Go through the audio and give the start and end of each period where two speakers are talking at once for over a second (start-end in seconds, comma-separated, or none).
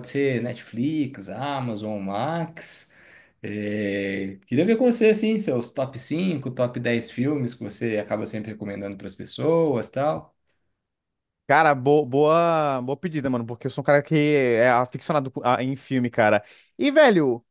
none